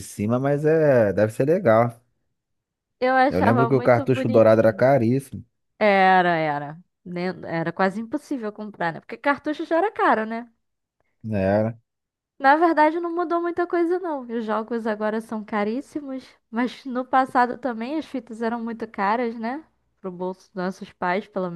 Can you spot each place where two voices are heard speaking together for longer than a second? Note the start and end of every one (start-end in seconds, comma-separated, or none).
3.3-4.9